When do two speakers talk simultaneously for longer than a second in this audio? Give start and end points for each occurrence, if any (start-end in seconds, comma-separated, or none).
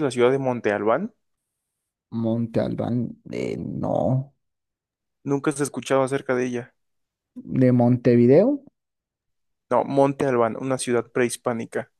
none